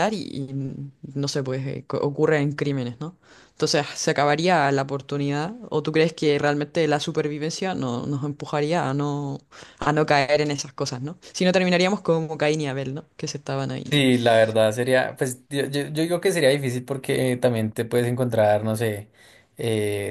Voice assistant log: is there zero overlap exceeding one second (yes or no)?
yes